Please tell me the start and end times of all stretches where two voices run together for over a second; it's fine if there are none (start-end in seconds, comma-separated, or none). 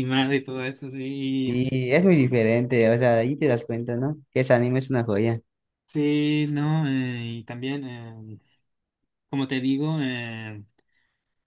none